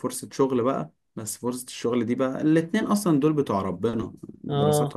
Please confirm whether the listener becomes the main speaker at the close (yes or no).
no